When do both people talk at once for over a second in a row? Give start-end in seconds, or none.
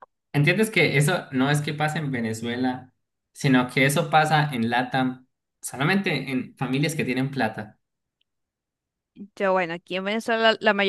none